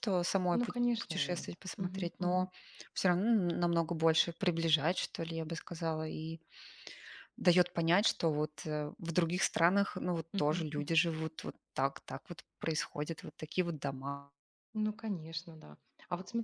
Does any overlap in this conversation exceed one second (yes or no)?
yes